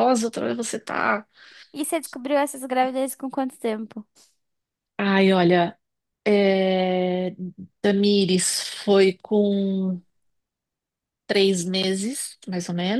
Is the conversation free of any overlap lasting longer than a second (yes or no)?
yes